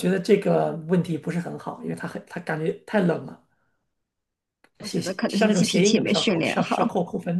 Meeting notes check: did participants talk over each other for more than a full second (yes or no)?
yes